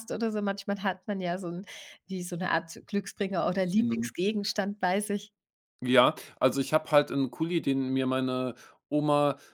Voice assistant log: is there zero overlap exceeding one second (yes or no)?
yes